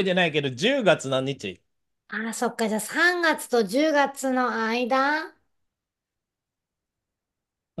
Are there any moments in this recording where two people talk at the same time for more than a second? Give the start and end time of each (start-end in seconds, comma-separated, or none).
none